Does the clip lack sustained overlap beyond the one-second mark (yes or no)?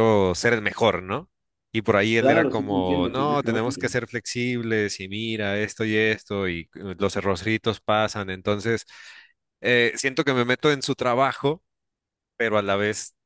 no